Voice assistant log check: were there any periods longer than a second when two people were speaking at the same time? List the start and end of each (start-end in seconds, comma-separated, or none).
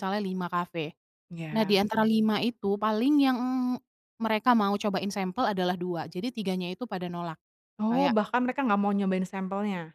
none